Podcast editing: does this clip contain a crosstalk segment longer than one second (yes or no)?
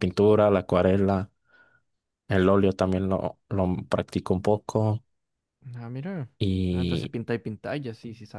no